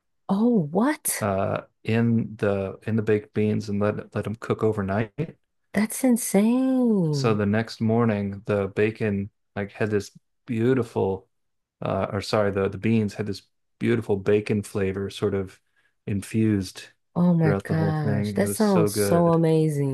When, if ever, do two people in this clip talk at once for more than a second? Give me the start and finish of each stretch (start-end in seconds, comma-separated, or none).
17.4-19.4